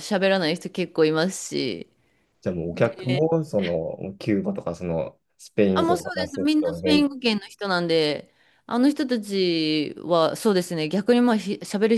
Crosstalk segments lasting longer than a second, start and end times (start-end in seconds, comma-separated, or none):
5.7-7.1